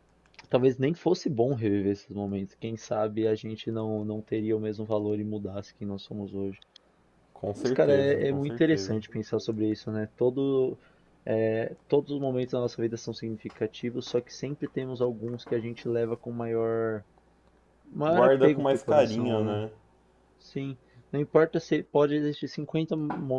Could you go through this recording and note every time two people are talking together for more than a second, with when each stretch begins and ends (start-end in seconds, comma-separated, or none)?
7.5-9.0, 18.1-19.6